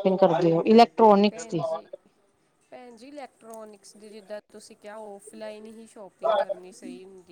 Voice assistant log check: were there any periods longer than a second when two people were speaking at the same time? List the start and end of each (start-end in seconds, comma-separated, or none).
none